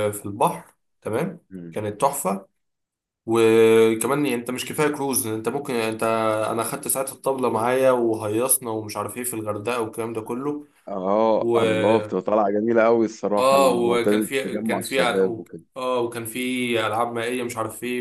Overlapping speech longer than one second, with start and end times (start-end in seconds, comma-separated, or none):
13.4-15.0